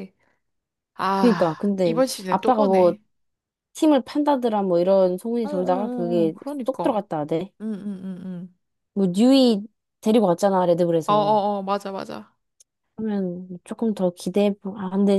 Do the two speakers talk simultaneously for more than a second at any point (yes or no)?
yes